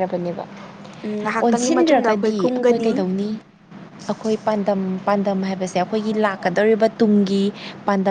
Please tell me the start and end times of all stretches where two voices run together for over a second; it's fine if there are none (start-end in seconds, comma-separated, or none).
1.4-2.9